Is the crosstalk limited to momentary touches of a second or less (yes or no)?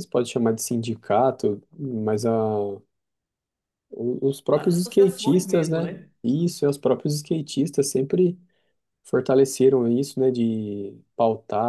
no